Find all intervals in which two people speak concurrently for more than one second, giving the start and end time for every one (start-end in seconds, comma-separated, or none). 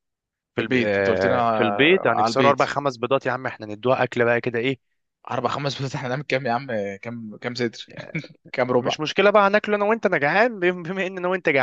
0.6-2.7